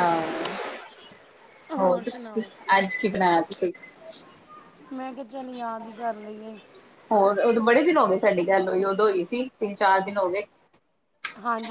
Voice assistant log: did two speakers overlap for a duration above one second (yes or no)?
no